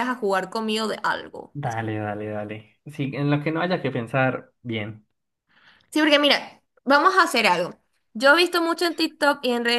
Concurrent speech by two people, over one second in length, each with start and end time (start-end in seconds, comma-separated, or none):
none